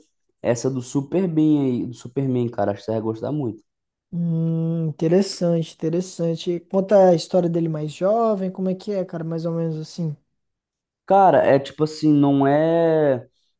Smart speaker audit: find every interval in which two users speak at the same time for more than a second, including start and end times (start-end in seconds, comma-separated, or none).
none